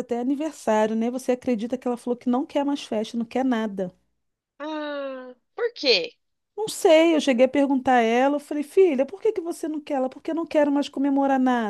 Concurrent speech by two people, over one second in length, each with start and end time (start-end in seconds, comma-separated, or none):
none